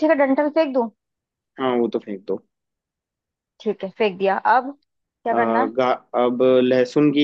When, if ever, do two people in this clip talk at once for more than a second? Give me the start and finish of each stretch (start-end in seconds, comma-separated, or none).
none